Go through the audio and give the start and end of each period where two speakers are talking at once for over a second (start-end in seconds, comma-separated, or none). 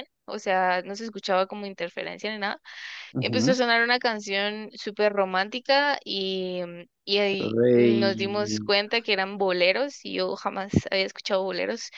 7.4-8.7